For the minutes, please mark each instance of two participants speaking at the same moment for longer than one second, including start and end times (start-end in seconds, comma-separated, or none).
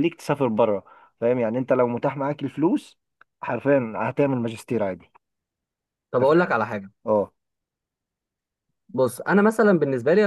none